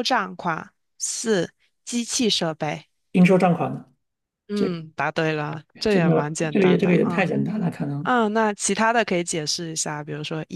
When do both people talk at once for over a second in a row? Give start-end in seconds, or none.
5.9-7.3